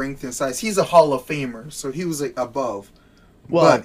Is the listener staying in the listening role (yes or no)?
yes